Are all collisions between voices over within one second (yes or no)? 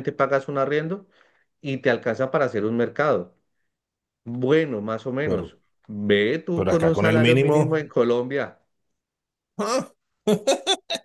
no